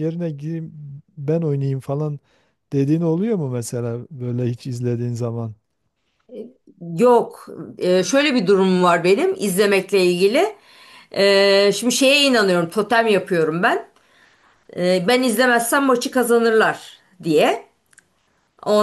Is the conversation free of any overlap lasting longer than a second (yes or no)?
yes